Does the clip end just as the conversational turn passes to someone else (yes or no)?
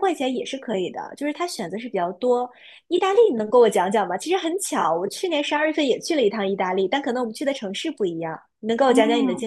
yes